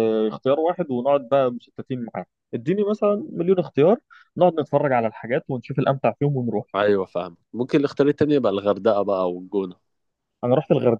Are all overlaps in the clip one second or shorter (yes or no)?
yes